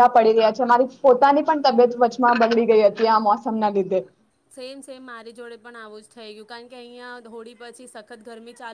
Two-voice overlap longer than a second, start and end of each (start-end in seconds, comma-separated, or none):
none